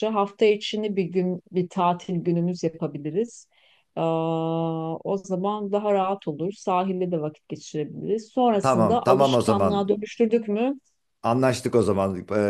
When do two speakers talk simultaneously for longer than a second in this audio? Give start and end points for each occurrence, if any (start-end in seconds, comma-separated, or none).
8.6-9.9